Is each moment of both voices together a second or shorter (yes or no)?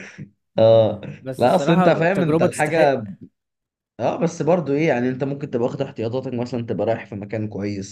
no